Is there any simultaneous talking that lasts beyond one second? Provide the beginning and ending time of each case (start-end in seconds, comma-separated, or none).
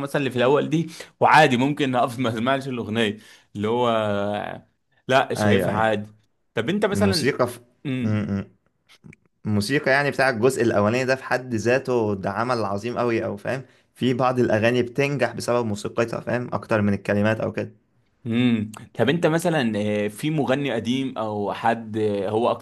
none